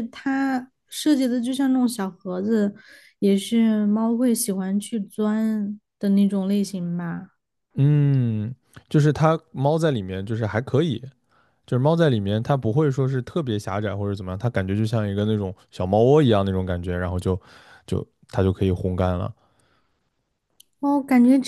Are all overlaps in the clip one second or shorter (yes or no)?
yes